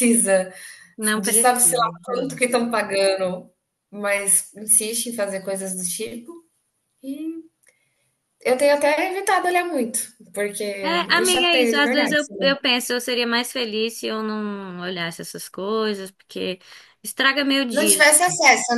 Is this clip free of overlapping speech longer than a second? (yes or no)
no